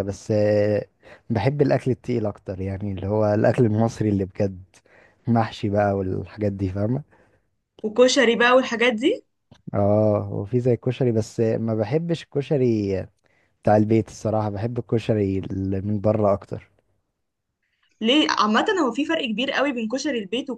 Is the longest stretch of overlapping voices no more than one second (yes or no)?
yes